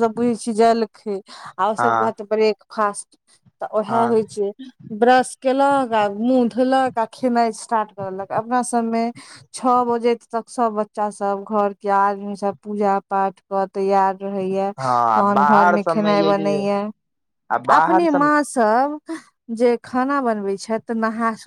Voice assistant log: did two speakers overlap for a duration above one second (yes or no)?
yes